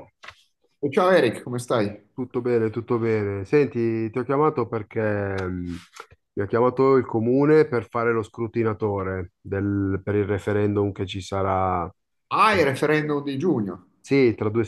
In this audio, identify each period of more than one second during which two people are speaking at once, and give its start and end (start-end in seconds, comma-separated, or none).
none